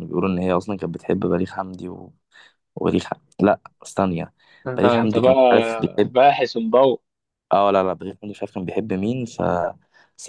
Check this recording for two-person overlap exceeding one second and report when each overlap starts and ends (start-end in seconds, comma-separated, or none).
none